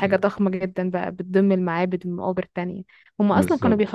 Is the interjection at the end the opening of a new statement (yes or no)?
no